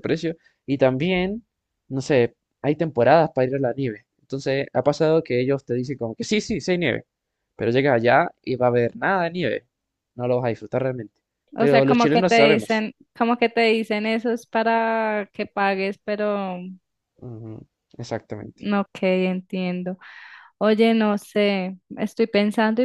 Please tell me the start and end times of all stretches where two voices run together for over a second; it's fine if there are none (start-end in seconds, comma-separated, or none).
11.6-12.8